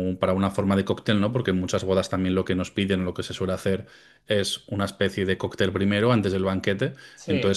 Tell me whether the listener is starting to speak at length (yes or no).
no